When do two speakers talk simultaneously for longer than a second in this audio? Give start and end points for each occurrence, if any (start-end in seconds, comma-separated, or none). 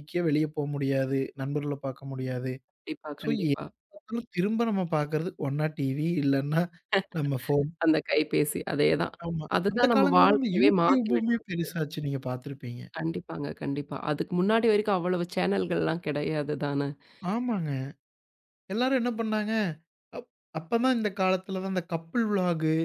9.6-11.7